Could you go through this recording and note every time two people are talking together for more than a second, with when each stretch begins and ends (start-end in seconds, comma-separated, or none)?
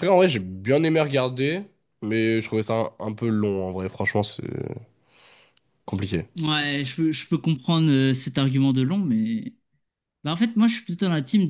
none